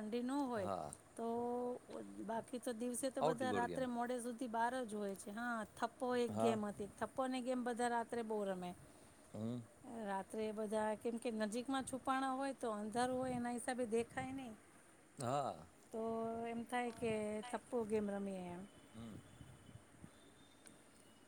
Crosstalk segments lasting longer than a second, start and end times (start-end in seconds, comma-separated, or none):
none